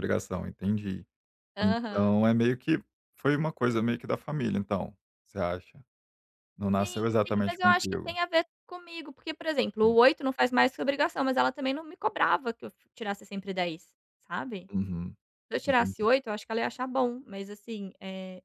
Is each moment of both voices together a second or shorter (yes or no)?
no